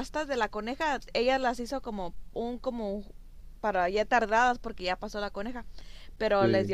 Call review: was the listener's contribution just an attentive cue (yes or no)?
yes